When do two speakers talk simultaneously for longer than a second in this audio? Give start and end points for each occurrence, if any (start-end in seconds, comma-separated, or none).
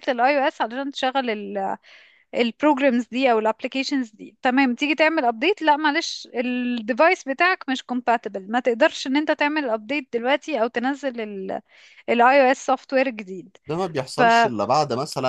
none